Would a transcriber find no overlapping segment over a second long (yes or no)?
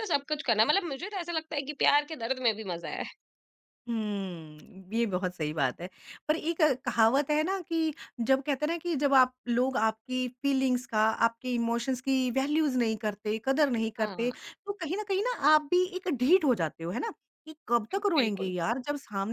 yes